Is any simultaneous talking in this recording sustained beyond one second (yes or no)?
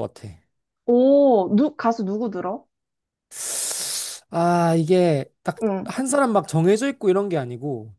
no